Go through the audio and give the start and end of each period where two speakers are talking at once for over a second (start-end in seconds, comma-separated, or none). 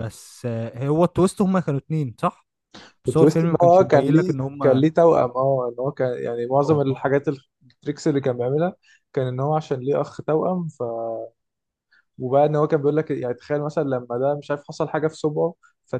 3.1-4.8